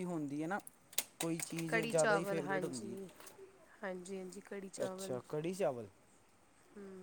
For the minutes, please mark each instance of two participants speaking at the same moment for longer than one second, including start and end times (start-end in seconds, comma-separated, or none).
1.7-3.0